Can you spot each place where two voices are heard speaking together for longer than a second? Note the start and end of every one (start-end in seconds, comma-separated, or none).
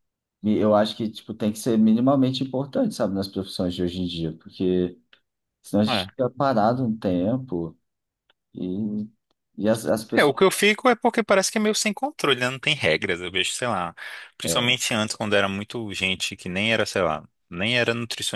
none